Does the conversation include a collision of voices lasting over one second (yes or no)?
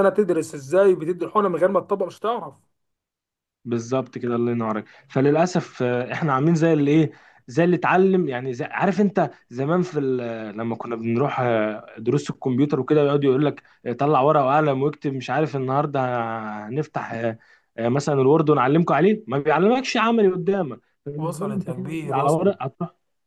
yes